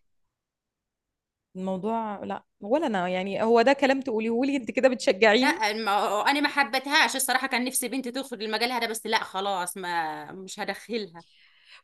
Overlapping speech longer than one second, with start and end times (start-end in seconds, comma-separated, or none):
none